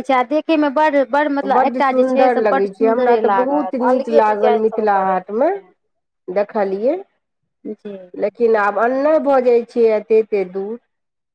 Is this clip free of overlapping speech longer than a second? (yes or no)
no